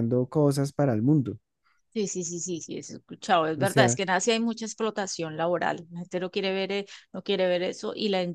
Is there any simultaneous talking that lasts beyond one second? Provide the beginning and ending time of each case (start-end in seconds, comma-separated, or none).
none